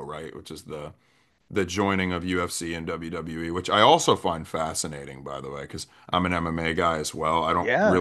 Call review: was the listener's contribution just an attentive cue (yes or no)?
yes